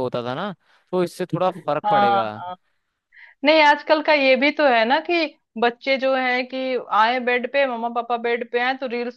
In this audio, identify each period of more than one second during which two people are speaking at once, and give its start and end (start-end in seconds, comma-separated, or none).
none